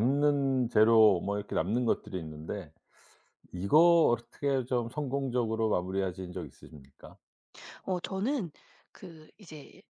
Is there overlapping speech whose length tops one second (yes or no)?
no